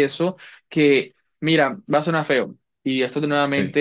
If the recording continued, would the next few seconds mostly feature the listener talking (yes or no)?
no